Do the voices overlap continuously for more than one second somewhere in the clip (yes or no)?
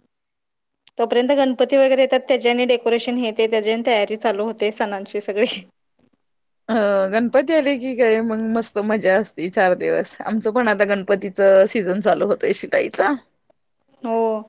no